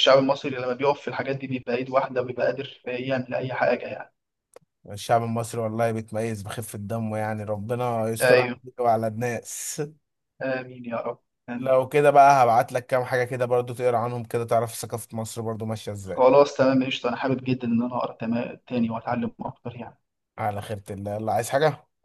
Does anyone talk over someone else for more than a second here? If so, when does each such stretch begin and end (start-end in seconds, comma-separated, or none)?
none